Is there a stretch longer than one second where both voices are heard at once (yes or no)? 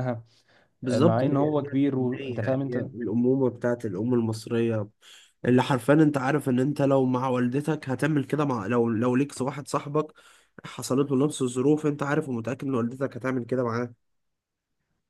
yes